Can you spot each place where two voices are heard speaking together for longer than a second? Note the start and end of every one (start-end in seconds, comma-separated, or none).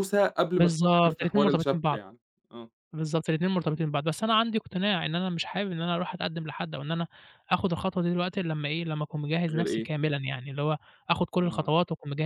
0.6-2.0